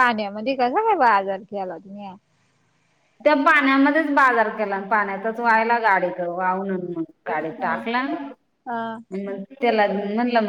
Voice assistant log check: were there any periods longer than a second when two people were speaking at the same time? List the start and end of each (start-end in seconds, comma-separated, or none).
none